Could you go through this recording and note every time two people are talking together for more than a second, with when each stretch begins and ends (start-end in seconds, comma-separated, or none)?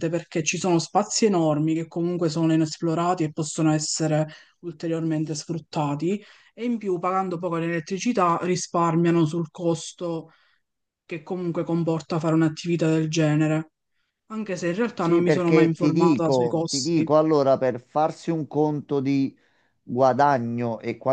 14.9-17.1